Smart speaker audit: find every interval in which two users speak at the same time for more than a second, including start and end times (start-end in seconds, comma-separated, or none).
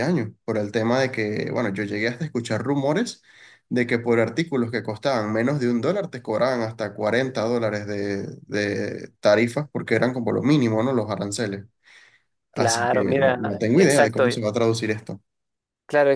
12.5-14.2